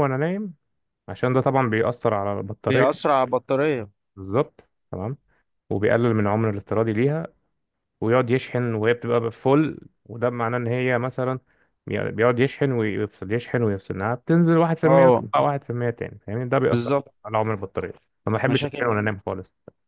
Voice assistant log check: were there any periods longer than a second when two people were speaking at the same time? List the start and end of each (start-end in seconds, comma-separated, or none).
none